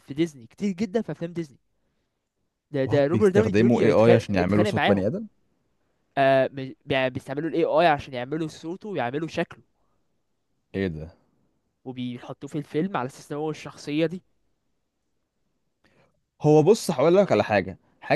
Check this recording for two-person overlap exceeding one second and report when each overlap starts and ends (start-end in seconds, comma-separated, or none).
2.9-5.1